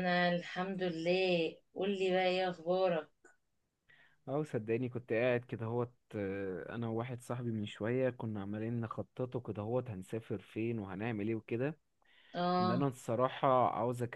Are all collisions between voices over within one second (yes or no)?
yes